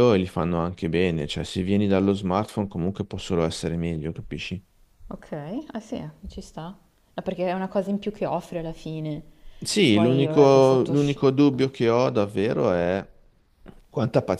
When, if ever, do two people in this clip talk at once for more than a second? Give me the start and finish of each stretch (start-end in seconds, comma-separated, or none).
9.9-11.2